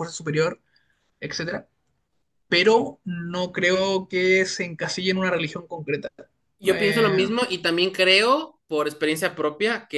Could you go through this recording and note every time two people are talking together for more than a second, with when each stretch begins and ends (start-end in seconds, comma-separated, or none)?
none